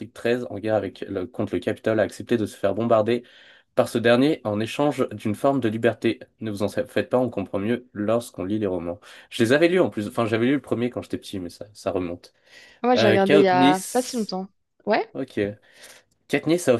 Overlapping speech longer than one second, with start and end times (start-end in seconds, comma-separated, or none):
13.0-14.4